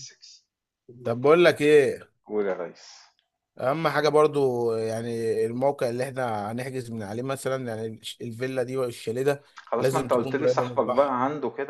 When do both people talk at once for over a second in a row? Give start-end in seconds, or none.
9.7-11.2